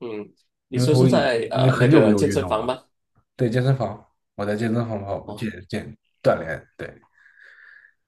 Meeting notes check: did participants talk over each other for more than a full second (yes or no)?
yes